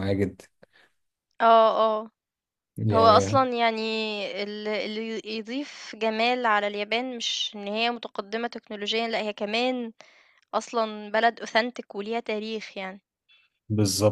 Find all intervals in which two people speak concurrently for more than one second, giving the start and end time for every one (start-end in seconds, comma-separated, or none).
none